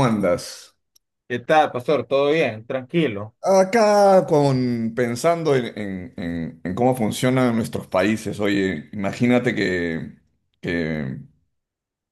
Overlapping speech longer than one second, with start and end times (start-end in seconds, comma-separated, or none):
none